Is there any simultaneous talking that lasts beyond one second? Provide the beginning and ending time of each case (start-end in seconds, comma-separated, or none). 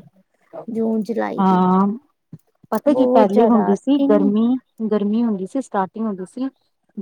2.9-4.3